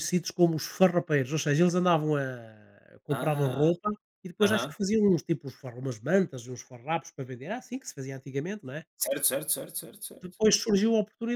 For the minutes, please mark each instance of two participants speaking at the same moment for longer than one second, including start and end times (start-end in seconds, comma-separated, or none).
none